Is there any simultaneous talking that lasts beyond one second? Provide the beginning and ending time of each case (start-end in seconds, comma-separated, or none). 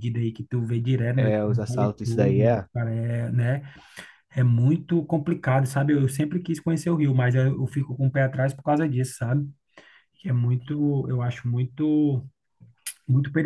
1.2-2.7